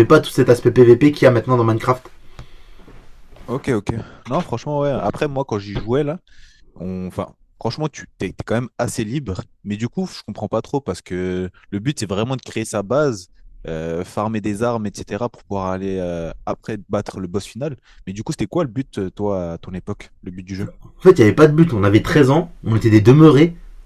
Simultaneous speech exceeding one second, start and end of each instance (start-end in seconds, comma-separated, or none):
none